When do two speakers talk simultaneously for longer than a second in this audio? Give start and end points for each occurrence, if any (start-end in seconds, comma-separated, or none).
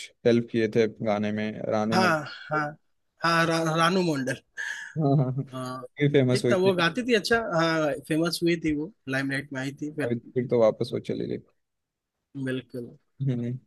none